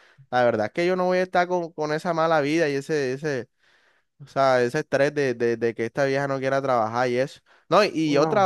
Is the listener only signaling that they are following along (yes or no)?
yes